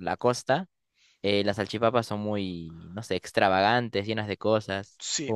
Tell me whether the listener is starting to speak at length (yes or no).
yes